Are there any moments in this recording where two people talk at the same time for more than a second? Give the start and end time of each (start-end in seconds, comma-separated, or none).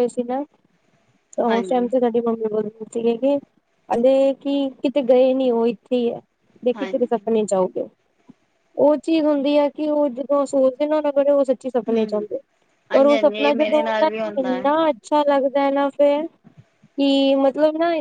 12.9-14.7